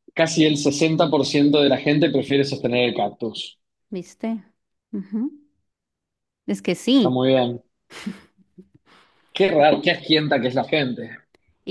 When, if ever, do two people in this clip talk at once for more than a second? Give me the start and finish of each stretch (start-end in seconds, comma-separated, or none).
none